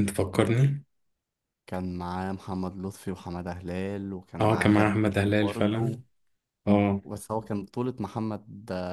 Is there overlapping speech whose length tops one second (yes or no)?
yes